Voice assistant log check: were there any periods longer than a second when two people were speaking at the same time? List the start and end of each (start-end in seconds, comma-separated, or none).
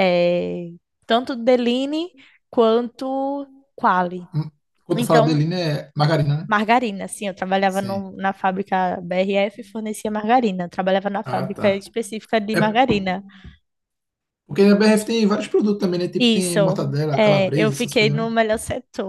16.2-18.3